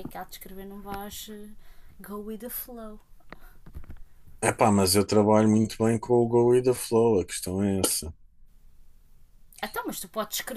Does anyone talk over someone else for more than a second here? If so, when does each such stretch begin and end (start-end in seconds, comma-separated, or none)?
none